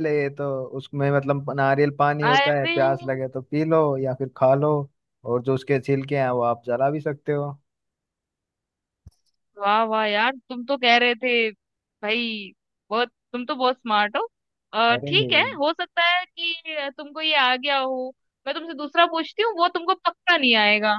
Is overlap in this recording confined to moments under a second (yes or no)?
yes